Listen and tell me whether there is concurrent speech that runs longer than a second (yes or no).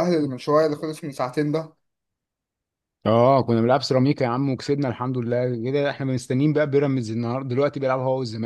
no